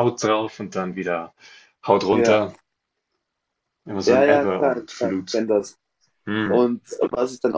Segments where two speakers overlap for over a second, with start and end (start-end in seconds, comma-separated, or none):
4.0-5.4